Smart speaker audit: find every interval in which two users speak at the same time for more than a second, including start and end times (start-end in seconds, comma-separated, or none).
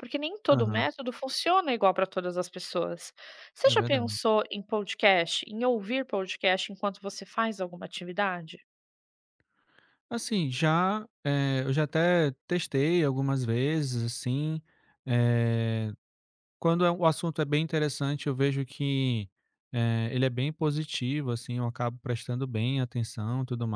none